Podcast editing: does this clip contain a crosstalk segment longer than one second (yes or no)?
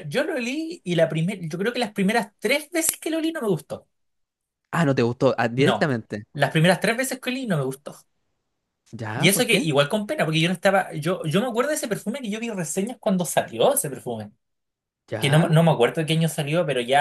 no